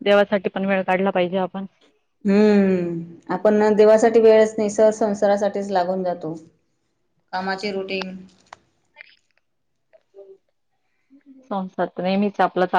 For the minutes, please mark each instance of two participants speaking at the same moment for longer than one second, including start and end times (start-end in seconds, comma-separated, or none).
none